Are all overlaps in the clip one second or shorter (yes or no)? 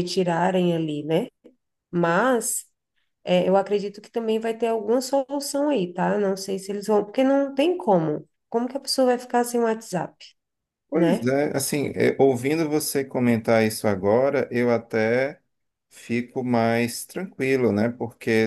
yes